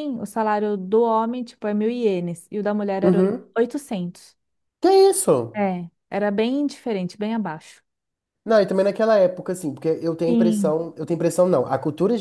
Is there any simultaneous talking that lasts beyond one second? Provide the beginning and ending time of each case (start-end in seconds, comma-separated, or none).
none